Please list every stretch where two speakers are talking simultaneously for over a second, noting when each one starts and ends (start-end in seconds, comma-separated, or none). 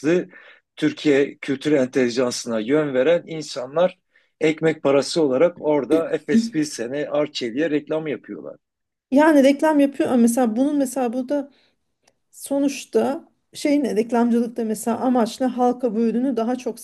none